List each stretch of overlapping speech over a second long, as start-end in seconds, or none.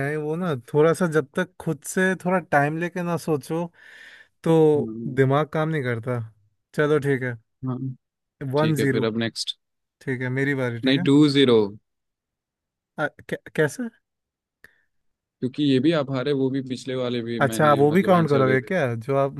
17.4-18.7